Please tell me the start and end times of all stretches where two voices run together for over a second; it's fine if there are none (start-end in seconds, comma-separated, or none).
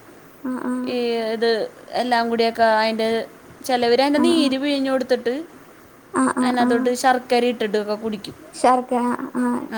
none